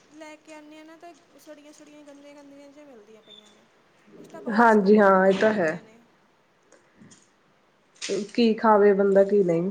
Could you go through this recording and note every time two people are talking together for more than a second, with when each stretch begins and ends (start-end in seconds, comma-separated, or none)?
4.6-5.8